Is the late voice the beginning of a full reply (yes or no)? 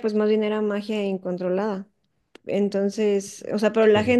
no